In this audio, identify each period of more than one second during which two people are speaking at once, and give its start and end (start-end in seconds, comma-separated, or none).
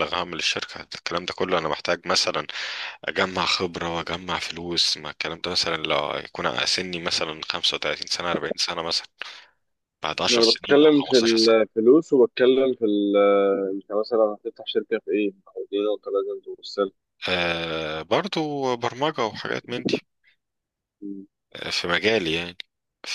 10.3-11.6